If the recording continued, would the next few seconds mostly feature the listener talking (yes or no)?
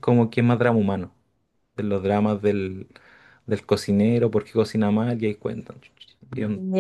yes